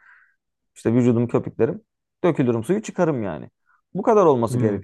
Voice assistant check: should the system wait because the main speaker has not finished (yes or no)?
yes